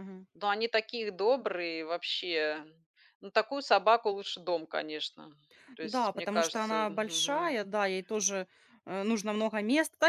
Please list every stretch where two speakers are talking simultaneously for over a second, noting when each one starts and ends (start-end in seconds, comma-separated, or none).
5.8-7.6